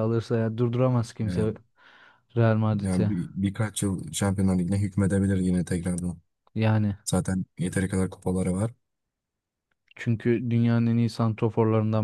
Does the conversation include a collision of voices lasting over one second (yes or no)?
no